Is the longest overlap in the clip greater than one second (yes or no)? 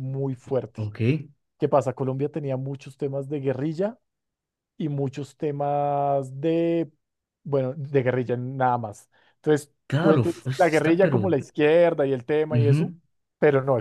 yes